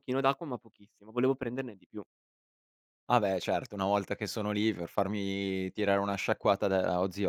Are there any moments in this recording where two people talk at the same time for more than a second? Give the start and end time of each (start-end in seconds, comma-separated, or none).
none